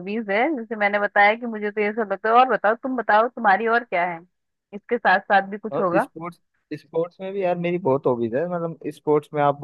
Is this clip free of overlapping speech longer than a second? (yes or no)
yes